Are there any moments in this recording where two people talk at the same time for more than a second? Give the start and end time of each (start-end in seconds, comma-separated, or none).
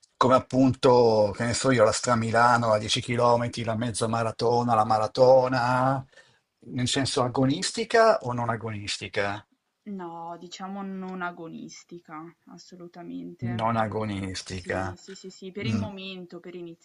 13.6-15.0